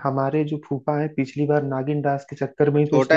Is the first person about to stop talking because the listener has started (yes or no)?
yes